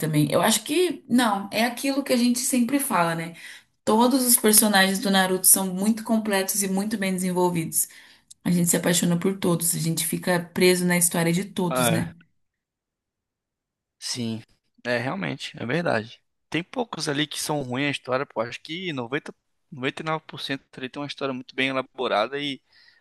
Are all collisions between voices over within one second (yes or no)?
yes